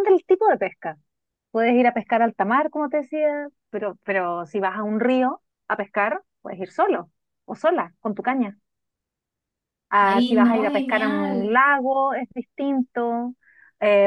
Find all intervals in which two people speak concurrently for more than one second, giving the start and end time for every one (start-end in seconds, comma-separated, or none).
10.1-11.6